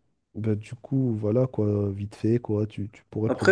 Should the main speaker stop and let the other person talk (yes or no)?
yes